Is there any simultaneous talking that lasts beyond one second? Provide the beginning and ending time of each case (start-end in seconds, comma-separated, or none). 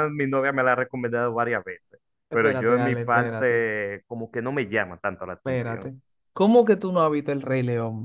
2.3-3.7